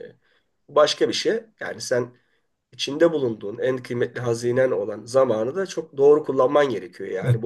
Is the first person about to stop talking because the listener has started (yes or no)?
yes